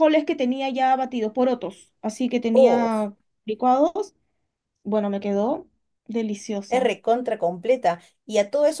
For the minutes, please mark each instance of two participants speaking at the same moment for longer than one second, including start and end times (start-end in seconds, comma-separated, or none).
none